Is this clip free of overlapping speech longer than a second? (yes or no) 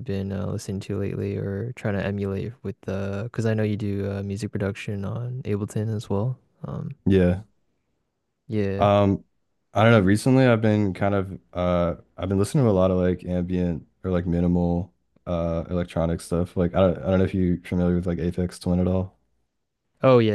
yes